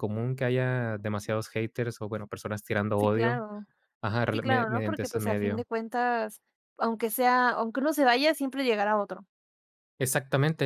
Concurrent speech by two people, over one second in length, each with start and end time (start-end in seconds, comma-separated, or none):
4.3-5.6